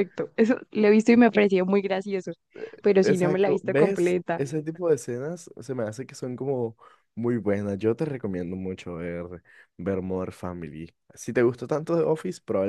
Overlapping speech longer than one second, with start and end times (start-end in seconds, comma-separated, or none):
3.0-4.4